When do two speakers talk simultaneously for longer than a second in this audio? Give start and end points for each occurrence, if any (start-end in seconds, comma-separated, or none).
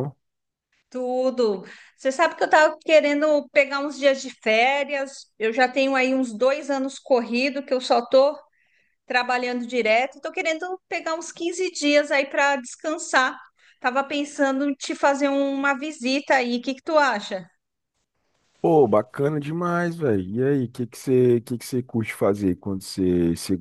none